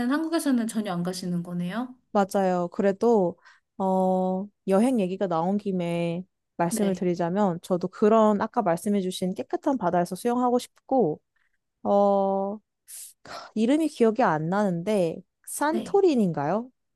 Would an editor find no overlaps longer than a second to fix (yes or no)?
yes